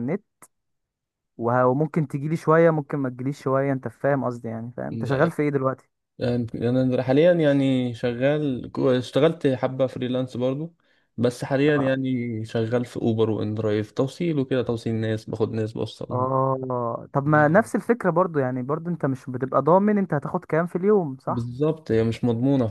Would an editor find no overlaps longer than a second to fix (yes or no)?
yes